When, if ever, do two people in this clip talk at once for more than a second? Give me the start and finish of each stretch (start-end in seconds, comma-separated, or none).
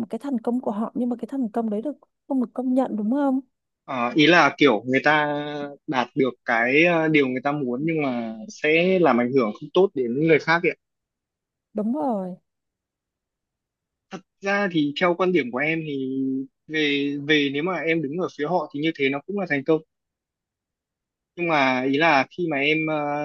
none